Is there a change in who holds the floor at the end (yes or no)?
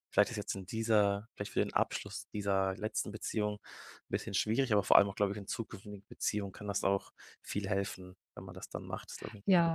yes